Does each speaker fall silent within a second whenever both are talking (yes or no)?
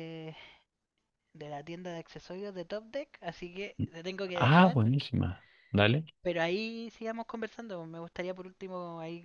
yes